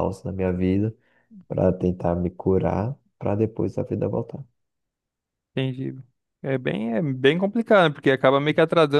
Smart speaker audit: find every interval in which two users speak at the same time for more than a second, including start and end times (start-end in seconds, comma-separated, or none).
none